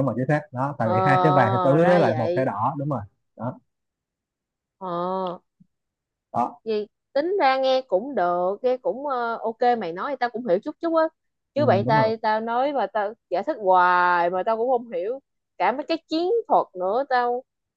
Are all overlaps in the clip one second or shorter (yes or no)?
no